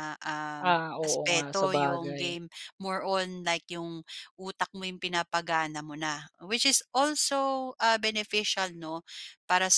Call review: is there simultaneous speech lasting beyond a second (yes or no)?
yes